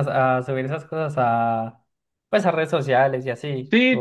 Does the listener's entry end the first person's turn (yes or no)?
yes